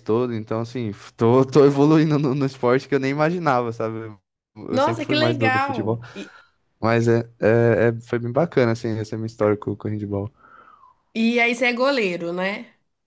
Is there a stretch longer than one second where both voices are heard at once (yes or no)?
yes